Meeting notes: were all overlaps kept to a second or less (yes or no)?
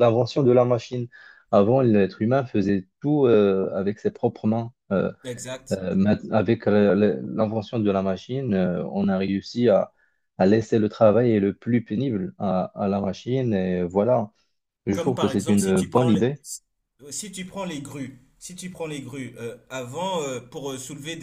no